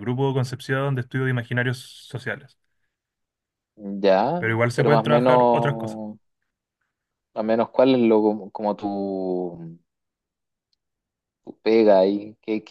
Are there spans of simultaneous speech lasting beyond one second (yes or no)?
yes